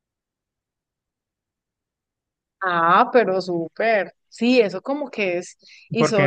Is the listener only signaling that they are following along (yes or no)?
no